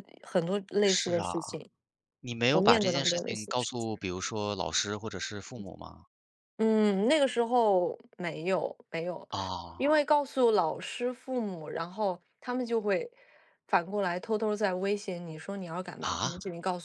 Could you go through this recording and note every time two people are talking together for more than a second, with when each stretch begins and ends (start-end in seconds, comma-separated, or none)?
2.5-3.9